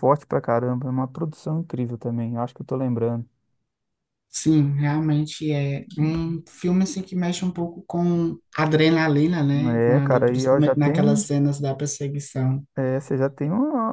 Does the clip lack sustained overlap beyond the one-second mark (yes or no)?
no